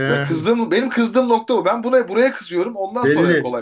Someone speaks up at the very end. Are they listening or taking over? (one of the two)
taking over